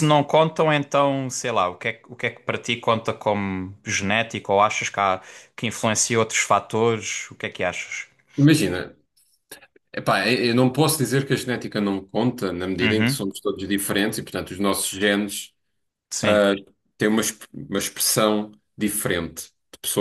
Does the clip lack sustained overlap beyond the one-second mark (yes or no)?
yes